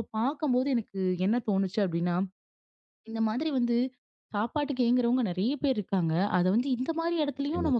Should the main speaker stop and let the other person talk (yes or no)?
no